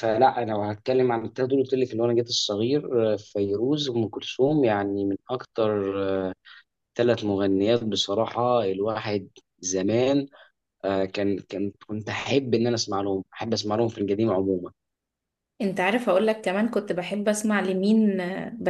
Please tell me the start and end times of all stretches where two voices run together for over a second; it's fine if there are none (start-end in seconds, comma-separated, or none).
none